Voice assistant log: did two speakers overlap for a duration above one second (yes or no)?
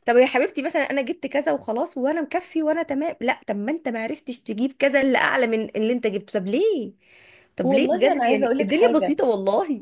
yes